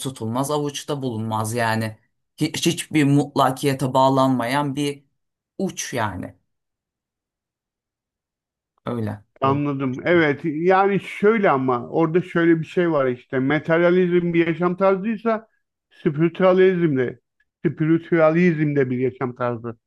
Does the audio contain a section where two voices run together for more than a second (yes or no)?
no